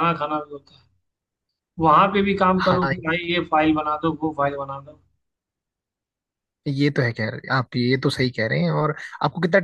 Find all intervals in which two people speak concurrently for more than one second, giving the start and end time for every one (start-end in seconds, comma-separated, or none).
none